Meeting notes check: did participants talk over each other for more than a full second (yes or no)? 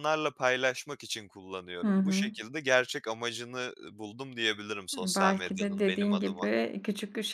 yes